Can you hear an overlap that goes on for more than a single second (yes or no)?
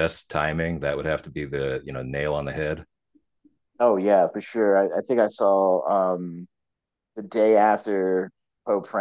no